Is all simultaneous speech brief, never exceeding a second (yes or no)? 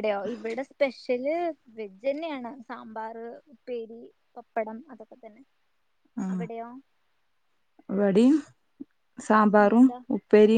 yes